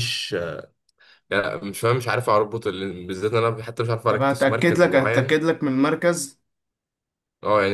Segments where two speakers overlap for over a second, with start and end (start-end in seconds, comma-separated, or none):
4.1-5.4